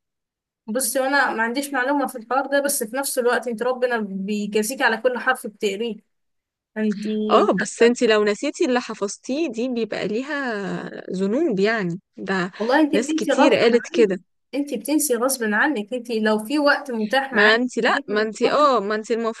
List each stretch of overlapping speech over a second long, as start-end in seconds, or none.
12.9-14.2, 17.3-18.7